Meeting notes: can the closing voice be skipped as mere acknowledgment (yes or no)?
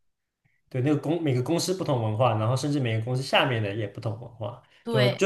yes